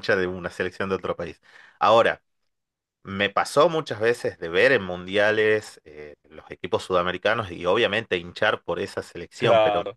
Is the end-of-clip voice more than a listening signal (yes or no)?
no